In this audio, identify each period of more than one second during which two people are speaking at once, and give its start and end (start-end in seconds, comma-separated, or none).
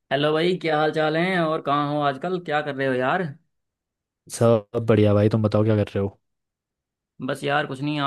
none